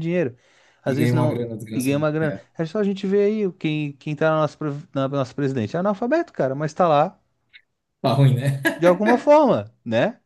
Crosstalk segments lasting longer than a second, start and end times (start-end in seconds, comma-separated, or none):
0.8-2.4